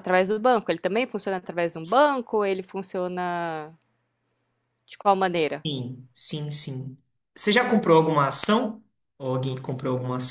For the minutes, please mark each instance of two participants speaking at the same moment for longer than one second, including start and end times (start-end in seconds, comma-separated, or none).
none